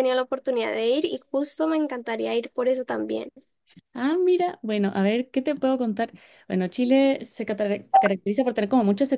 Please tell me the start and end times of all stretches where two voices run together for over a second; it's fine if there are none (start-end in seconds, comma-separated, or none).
none